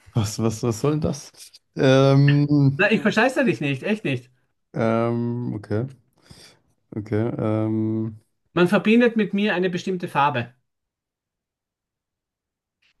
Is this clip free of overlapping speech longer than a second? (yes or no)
yes